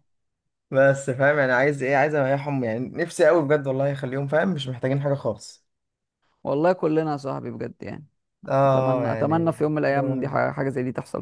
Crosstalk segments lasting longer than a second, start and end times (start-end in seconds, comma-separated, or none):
8.7-10.4